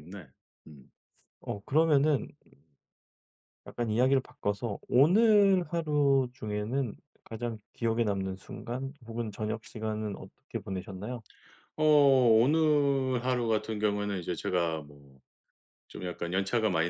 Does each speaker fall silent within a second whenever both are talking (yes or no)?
yes